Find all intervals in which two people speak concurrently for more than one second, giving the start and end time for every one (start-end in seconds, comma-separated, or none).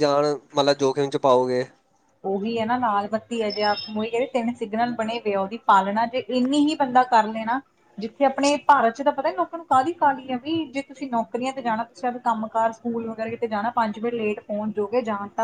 none